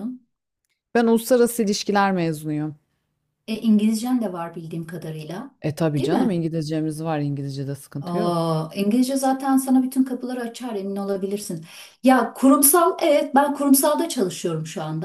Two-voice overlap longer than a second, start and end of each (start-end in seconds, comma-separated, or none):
none